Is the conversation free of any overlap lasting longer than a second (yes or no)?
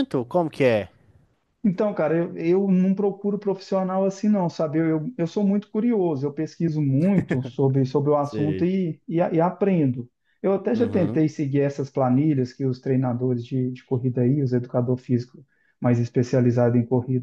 yes